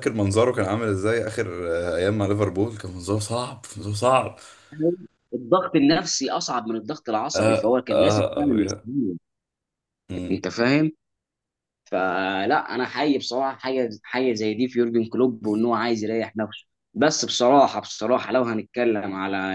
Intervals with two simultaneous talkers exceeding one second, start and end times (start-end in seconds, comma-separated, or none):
7.3-8.9